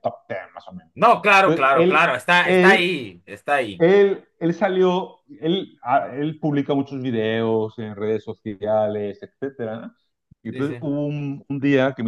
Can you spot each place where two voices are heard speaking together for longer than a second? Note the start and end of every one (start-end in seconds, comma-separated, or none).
1.4-3.0